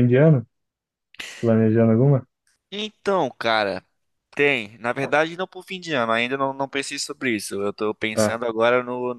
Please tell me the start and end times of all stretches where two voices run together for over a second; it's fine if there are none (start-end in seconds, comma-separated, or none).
none